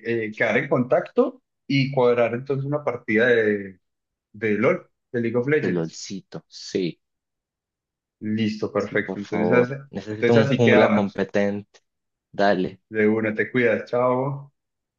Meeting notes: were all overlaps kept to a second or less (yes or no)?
no